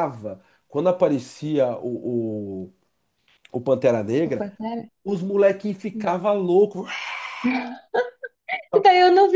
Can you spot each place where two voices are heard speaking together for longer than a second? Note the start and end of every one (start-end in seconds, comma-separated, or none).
none